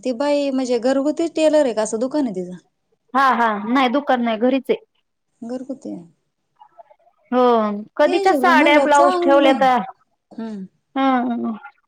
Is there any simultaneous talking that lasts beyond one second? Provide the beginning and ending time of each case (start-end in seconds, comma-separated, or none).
8.1-9.6